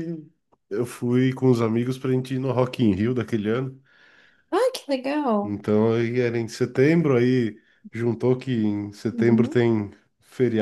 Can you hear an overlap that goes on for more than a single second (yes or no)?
no